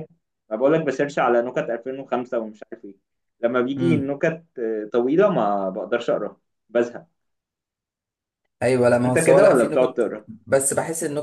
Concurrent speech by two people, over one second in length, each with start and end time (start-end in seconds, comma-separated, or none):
9.1-10.2